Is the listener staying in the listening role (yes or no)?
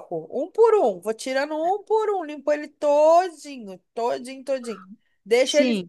yes